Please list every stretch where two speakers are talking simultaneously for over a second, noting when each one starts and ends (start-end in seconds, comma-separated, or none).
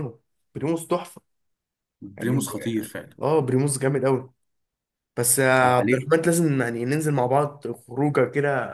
none